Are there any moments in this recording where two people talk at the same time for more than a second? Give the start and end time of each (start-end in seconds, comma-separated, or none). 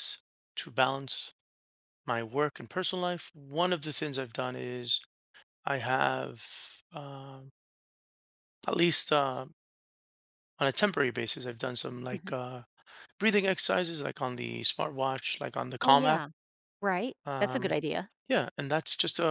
none